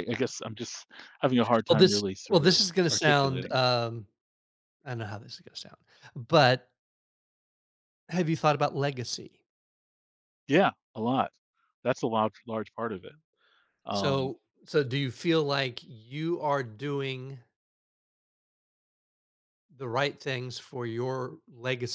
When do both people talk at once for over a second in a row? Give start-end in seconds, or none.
1.7-3.6